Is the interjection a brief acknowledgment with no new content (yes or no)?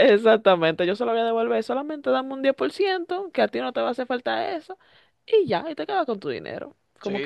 no